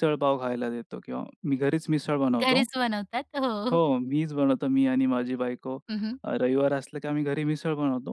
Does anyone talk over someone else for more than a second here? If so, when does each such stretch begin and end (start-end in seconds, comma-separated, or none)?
none